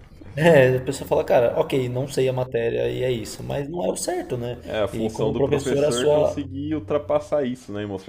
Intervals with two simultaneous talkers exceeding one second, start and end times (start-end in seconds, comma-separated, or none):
4.6-6.5